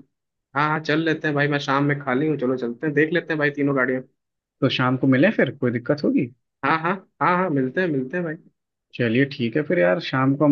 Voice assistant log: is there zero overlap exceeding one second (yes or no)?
yes